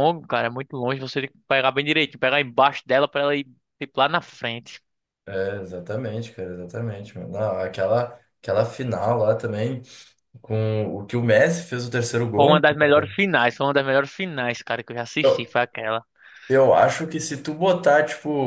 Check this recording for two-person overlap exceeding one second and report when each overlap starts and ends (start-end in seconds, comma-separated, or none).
none